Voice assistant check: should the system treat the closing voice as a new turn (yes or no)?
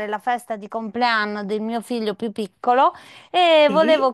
no